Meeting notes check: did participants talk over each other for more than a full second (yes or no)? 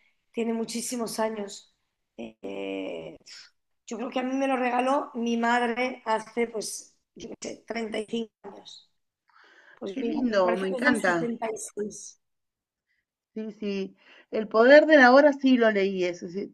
yes